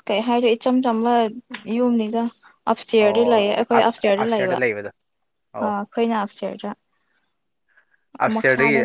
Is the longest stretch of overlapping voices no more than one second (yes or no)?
no